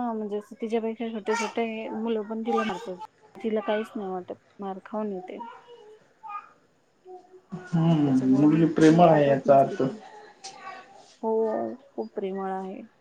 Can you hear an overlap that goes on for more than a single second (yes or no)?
yes